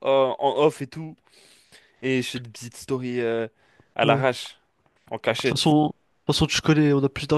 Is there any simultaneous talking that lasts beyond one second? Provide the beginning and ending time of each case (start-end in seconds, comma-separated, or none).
none